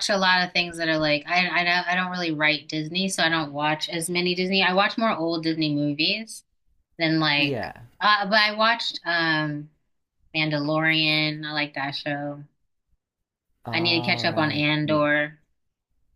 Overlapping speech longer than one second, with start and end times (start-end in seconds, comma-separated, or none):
13.7-15.1